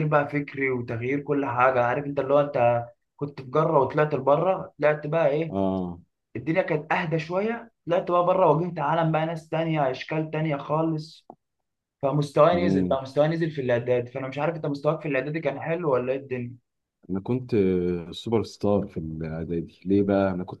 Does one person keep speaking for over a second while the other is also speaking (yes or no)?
no